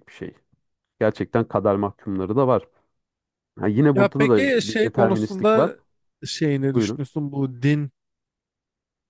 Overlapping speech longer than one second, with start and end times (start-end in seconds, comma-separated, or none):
3.9-5.7